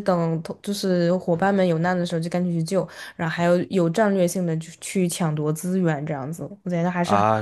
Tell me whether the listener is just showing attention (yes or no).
no